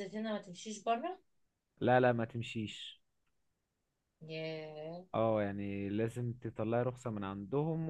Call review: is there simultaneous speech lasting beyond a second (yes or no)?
no